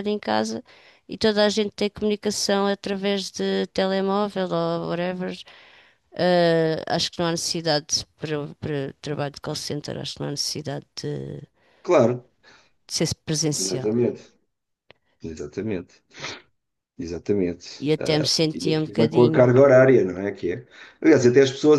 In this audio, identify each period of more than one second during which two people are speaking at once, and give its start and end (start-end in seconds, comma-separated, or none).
17.8-19.5